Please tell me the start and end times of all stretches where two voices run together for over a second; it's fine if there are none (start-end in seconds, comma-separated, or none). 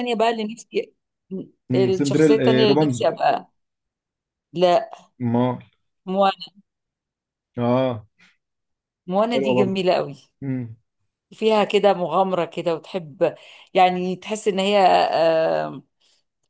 1.7-3.1